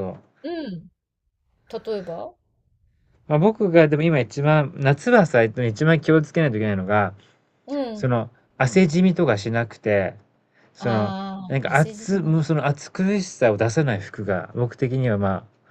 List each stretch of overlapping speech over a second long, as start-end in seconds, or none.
10.8-12.4